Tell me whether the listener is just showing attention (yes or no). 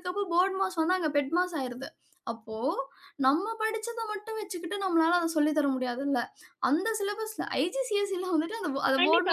no